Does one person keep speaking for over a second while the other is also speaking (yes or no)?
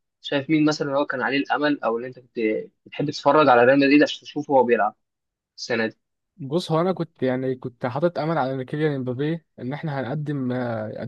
no